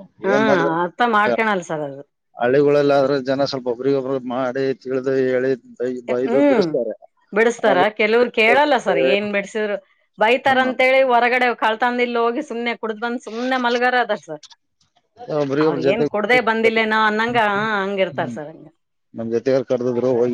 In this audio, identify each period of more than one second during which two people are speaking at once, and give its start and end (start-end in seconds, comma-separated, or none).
none